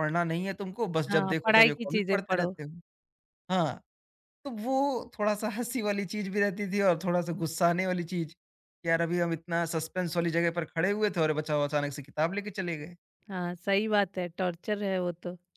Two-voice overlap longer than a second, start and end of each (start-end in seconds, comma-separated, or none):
1.1-2.5